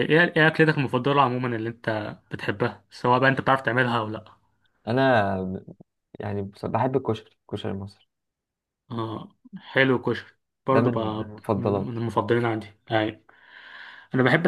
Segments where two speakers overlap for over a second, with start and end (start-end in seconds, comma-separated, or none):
10.7-12.1